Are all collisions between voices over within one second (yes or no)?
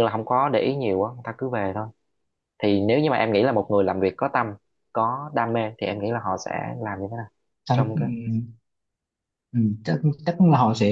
yes